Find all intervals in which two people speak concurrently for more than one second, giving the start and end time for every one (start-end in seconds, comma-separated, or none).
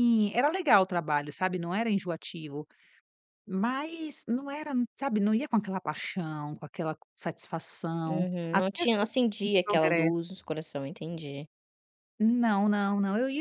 8.1-10.3